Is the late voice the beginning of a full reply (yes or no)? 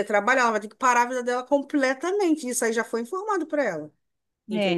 yes